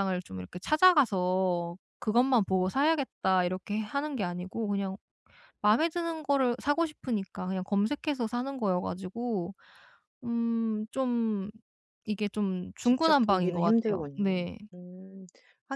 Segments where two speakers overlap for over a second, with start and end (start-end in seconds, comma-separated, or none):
12.8-14.4